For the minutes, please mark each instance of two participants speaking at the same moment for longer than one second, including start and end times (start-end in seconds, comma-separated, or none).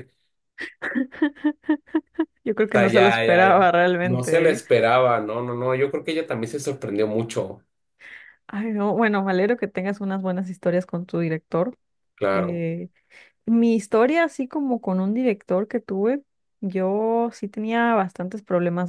2.7-4.6